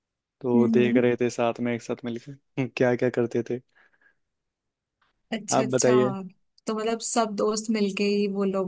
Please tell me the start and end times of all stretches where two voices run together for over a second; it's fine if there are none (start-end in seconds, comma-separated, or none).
none